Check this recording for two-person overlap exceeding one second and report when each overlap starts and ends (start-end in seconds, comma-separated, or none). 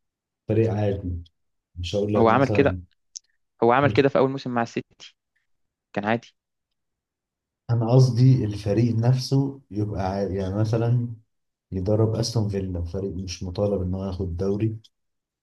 none